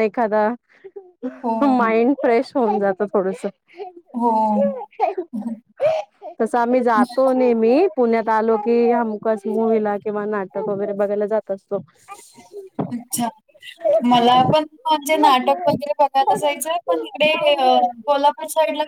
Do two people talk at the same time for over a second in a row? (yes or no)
no